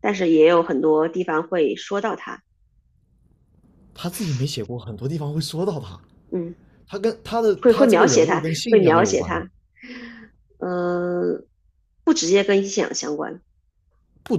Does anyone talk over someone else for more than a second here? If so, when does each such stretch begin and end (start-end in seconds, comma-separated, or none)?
7.6-9.4